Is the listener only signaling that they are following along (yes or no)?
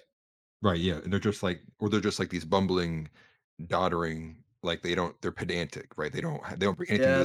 no